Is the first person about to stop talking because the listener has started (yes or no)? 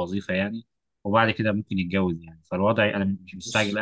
no